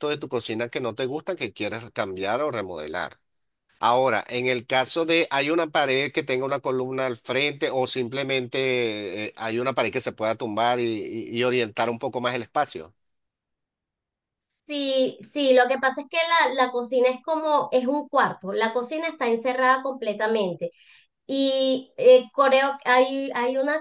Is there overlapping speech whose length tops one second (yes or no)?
no